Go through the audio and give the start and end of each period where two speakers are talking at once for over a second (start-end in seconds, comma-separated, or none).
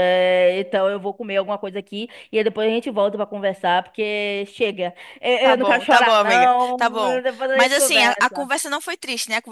5.4-8.5